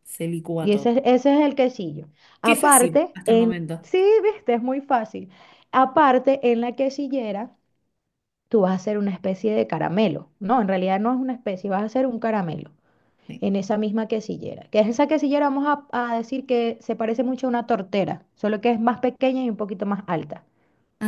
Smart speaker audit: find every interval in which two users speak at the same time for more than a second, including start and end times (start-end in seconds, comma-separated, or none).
2.4-3.9